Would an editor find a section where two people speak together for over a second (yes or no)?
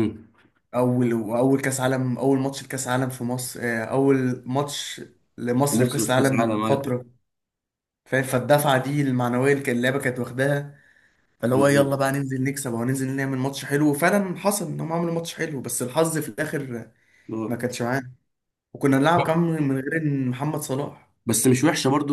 yes